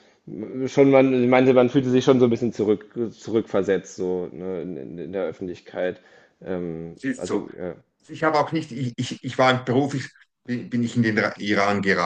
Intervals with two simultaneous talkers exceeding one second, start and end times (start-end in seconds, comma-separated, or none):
none